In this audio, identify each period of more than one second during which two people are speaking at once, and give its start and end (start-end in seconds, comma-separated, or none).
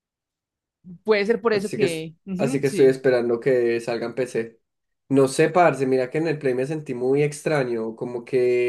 1.5-3.0